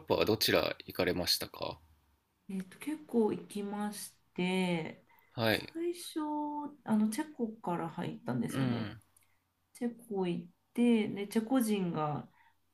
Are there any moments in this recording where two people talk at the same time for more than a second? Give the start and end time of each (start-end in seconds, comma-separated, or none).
none